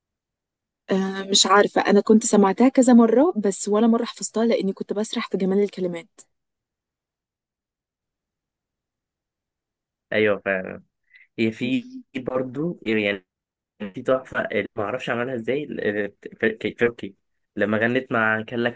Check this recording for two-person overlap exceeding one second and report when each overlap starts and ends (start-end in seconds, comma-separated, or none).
none